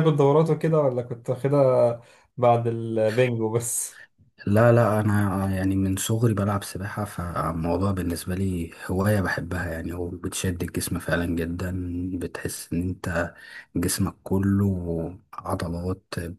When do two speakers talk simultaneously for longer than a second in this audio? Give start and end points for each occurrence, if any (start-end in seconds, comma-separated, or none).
none